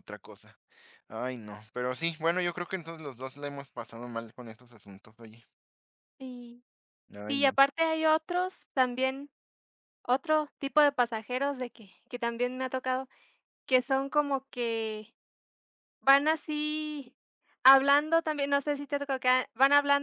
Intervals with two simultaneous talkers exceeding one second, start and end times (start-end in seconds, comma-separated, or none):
none